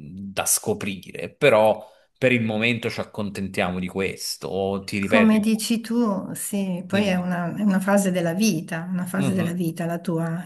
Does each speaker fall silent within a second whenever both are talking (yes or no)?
yes